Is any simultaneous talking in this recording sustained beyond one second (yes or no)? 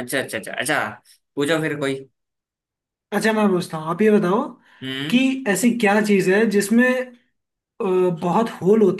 no